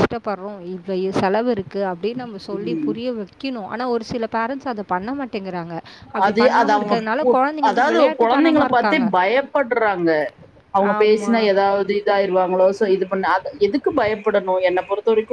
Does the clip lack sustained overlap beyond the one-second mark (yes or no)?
no